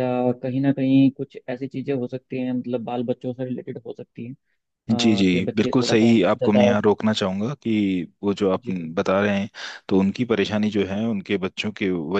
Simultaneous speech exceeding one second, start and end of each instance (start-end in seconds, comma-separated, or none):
4.9-6.7